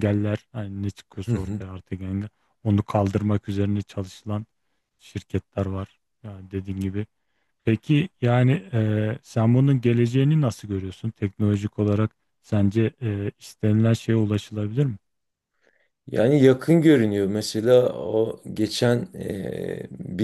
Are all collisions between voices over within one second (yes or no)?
yes